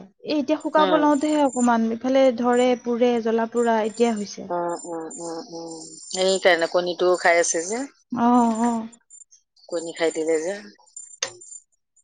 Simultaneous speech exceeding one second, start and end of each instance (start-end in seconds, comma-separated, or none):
none